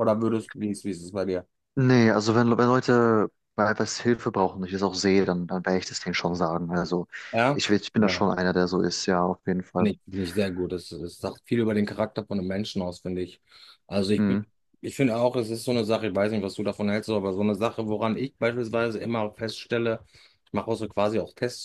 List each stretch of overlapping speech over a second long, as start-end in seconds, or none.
none